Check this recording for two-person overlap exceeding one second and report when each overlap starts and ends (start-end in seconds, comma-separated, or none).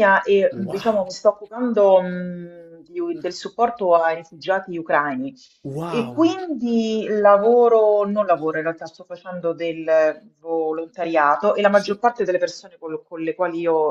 none